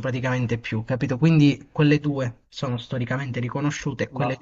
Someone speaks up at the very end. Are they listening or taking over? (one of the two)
listening